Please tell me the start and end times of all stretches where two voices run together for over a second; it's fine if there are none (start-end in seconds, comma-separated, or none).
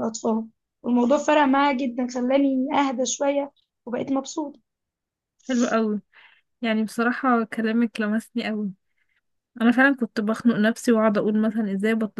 none